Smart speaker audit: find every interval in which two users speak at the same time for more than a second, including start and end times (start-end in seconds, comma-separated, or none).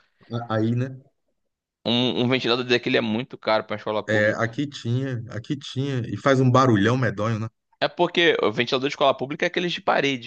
none